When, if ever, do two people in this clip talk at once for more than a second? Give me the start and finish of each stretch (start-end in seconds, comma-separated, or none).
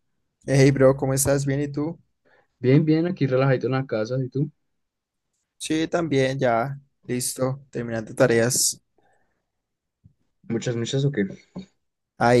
none